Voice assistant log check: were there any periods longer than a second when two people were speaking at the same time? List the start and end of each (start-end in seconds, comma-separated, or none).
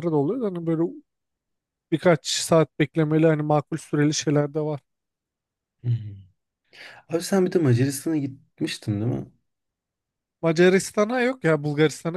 none